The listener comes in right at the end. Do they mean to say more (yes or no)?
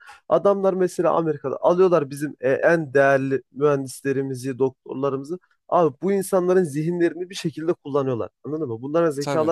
yes